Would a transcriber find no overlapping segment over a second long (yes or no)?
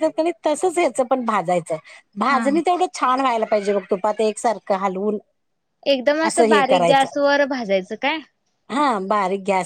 yes